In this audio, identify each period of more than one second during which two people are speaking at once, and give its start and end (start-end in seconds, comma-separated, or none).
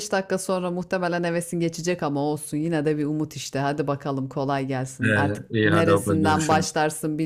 5.0-6.8